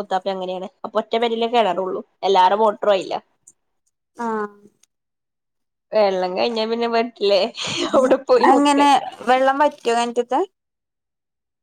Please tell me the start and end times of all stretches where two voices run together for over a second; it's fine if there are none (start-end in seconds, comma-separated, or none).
none